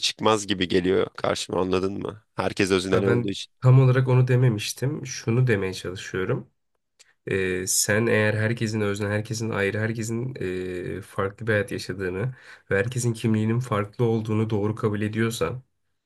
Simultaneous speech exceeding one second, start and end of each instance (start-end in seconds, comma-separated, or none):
none